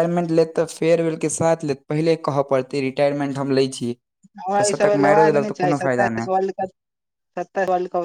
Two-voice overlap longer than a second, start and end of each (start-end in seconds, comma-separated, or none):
4.6-6.3